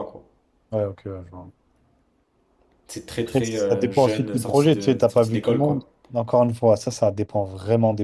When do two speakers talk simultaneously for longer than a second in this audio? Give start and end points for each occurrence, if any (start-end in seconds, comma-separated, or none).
3.3-5.9